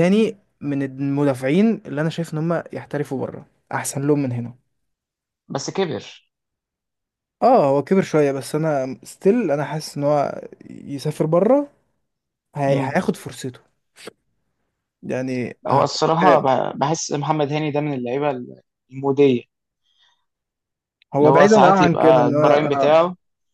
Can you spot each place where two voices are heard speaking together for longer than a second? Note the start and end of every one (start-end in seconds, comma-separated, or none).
21.2-23.0